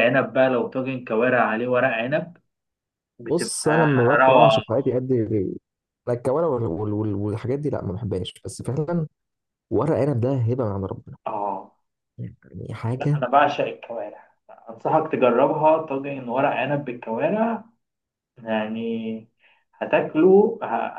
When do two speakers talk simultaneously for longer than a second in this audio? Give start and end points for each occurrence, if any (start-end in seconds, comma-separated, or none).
3.3-4.6